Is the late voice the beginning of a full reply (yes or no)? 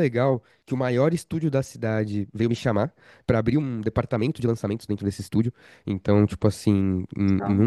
no